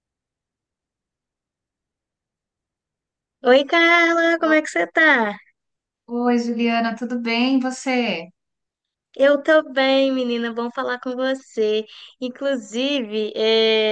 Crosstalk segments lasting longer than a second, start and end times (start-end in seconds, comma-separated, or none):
none